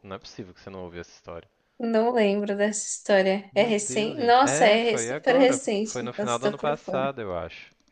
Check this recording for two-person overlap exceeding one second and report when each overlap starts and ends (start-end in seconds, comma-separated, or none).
3.5-7.1